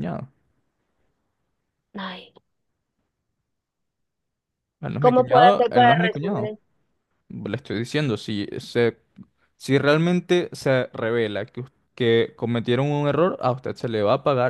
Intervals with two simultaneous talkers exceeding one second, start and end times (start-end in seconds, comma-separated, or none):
5.0-6.5